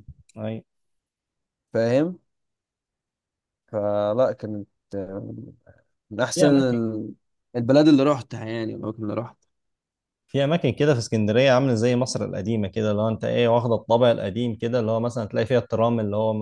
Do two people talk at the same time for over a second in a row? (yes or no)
no